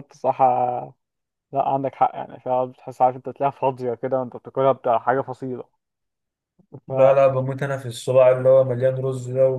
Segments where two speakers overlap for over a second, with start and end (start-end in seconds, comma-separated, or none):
none